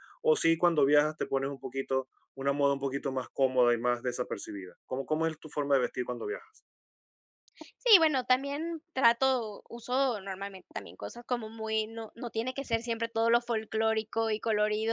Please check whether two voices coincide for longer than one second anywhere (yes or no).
no